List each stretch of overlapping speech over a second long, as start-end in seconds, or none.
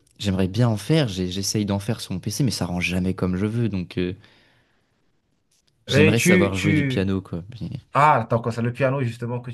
5.9-7.1